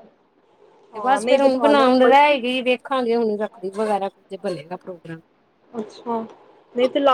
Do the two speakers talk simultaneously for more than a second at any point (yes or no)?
yes